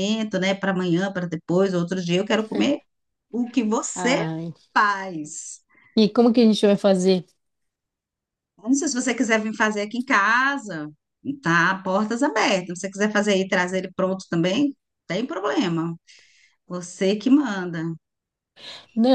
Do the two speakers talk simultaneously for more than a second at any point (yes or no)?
no